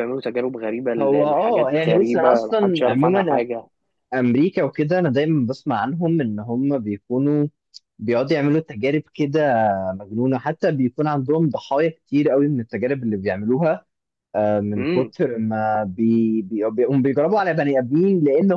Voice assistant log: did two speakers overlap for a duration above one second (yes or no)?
yes